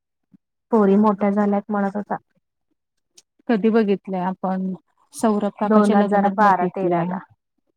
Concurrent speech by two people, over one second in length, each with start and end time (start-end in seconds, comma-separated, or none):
5.7-7.2